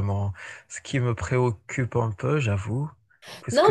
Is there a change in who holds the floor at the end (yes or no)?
yes